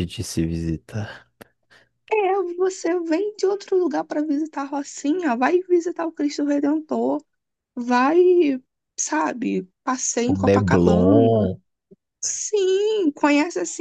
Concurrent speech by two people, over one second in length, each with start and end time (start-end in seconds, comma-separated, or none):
10.3-11.5